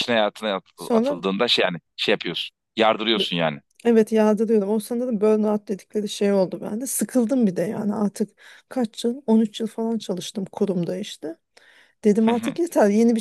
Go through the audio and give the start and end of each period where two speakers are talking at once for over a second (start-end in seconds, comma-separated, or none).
none